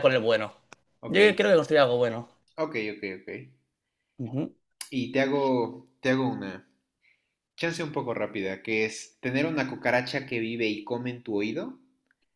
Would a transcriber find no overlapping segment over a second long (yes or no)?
yes